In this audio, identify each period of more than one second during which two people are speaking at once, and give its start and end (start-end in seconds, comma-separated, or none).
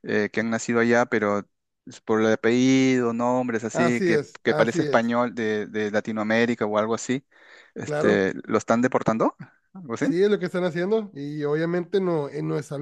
3.7-5.2